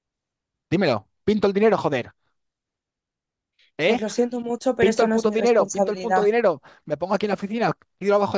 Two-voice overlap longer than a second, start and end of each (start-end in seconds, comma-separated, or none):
4.8-6.2